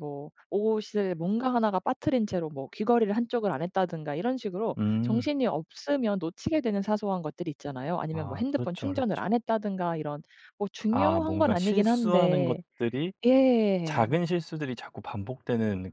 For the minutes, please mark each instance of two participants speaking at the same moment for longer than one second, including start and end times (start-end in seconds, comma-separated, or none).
8.1-9.4, 10.9-12.6